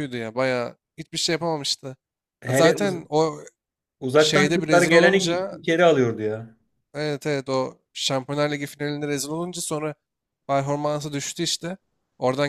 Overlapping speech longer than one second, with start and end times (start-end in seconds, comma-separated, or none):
4.2-5.6